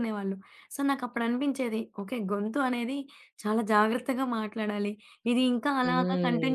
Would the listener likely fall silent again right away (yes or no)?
yes